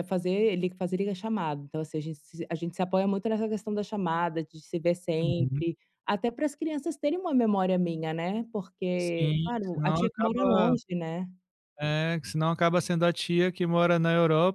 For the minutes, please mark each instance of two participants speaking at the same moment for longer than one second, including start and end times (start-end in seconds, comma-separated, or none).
8.9-10.7